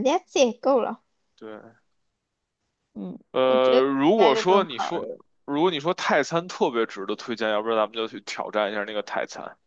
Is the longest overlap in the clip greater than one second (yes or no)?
yes